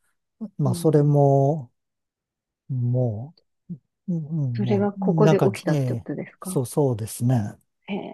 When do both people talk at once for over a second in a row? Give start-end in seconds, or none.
4.5-6.6